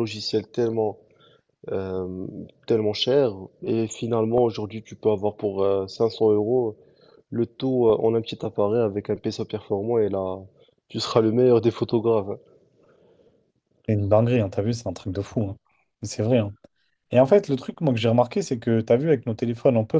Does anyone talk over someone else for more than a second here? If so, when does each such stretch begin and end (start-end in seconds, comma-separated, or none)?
none